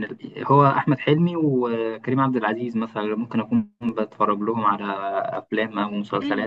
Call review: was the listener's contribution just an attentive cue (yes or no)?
no